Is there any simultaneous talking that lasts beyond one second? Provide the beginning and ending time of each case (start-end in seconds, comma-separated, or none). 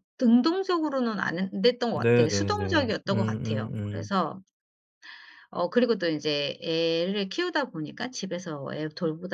1.9-4.1